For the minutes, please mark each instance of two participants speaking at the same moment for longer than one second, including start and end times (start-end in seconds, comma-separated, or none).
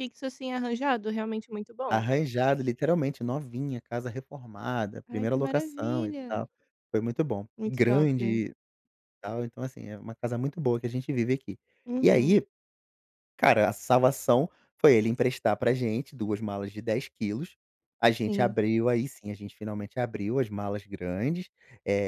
5.1-6.5